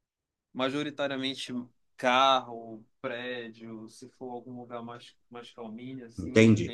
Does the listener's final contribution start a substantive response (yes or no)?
yes